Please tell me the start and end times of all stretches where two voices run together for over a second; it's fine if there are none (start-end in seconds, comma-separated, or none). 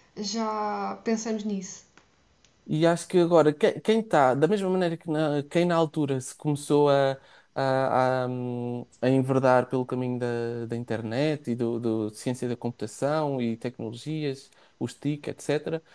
none